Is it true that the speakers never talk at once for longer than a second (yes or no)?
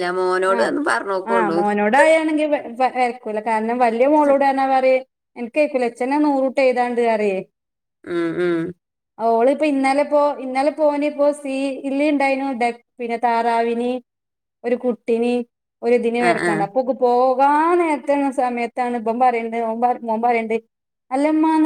yes